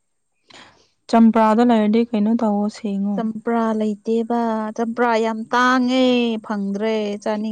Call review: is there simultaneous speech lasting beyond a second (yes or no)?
no